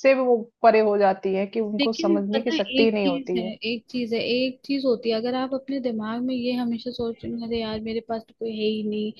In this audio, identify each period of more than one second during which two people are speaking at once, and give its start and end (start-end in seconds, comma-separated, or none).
1.8-3.5